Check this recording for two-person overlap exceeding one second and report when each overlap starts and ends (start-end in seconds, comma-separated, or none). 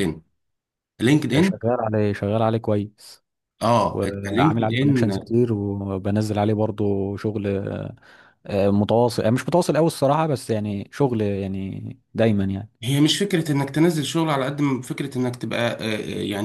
3.9-5.1